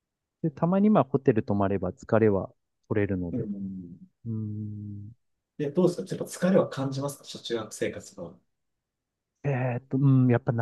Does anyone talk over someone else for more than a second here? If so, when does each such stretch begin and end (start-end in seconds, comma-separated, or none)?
none